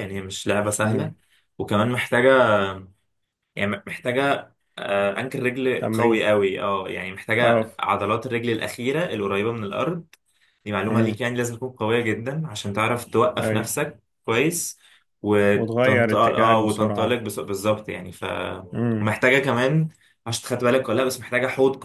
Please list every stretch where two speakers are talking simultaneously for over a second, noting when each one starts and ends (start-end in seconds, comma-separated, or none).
15.5-17.2